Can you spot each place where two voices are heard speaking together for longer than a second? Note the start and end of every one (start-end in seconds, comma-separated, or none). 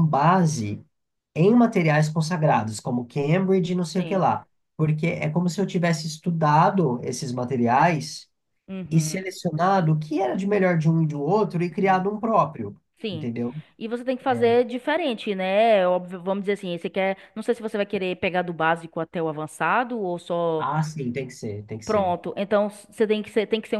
none